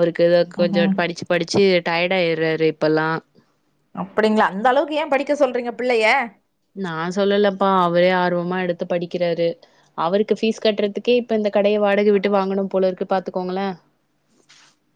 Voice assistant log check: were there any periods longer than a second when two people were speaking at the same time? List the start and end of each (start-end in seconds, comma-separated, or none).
none